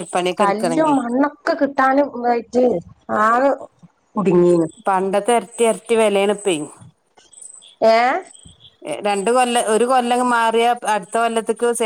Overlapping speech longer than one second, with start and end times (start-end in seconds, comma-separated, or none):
none